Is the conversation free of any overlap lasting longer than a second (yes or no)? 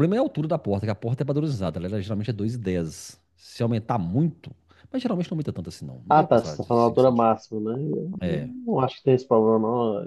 no